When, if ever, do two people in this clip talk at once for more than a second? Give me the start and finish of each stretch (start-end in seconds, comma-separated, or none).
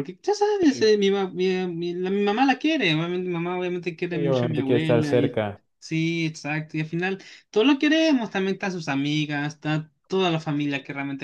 4.1-5.4